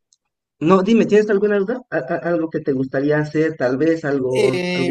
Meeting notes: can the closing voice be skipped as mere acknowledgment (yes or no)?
no